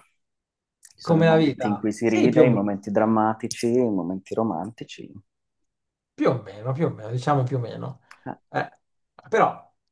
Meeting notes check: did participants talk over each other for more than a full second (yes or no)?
yes